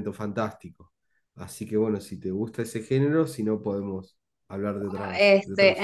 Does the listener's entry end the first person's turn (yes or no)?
yes